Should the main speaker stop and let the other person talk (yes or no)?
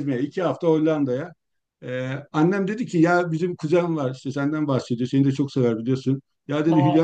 no